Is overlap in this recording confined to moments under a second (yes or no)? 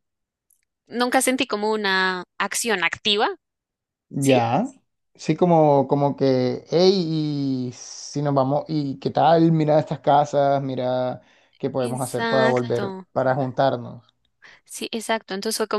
no